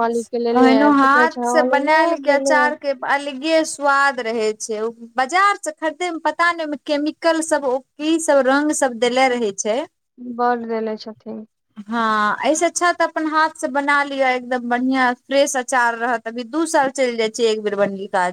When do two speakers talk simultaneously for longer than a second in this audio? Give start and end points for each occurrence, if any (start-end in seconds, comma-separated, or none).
0.6-2.6